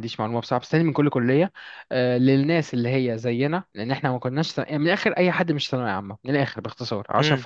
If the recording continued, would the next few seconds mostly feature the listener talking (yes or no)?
yes